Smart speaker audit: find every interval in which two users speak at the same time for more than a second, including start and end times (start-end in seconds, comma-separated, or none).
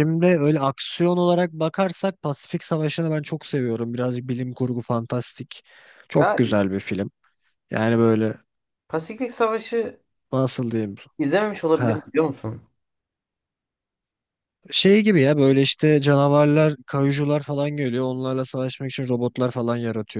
none